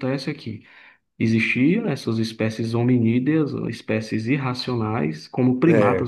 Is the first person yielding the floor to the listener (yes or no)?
no